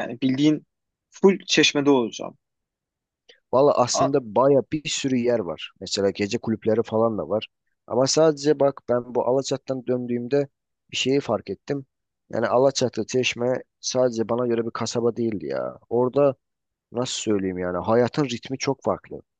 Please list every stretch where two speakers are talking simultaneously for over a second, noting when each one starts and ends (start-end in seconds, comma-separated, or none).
none